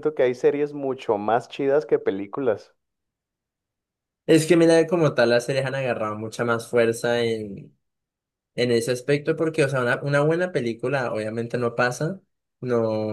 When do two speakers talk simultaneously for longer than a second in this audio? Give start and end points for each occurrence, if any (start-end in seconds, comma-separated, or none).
none